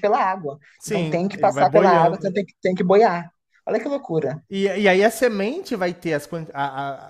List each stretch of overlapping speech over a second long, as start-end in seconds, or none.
0.8-2.4